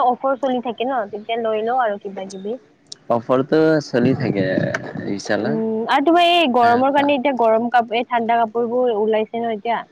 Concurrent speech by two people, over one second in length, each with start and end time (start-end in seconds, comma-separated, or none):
none